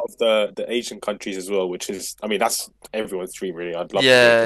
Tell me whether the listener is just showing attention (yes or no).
no